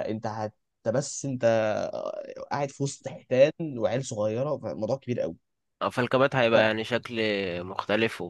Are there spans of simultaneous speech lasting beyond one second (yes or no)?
no